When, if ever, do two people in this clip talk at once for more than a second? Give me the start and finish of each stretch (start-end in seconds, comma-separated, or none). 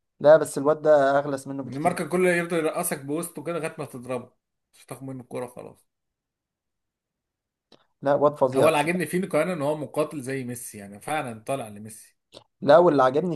none